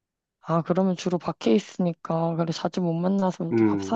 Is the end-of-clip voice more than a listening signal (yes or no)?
yes